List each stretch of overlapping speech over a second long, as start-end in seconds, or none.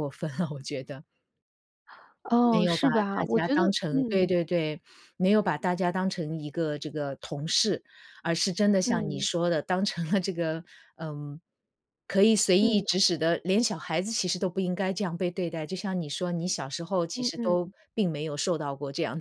2.5-4.3